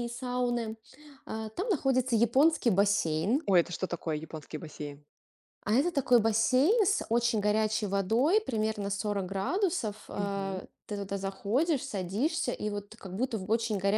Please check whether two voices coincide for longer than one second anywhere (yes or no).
no